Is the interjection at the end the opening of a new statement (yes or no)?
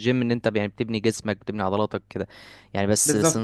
no